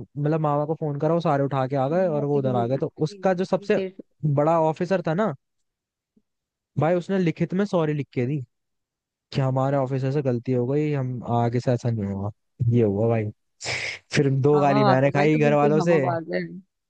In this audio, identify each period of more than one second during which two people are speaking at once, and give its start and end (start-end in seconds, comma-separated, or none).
1.9-3.8, 14.5-16.0